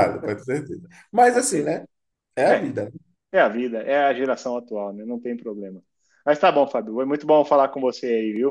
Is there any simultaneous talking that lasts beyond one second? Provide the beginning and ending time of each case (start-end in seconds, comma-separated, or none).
none